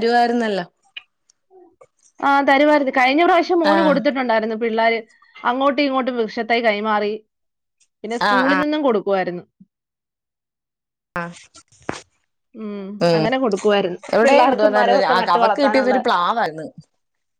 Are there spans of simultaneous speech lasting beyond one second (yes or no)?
yes